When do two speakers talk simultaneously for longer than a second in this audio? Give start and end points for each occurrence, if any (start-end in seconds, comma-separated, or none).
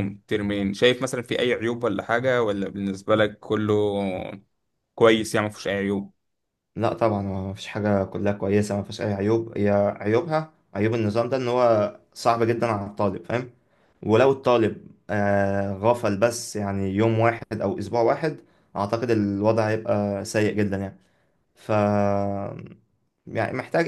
none